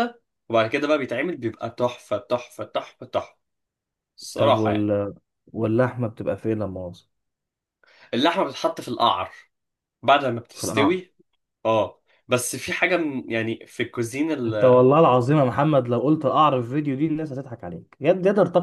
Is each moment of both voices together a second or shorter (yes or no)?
yes